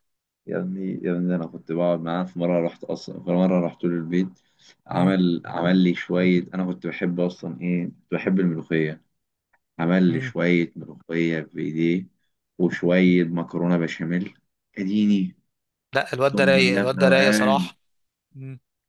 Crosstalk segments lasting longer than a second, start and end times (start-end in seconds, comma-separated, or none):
16.1-17.7